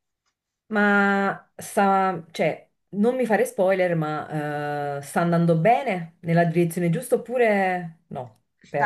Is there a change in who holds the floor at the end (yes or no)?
yes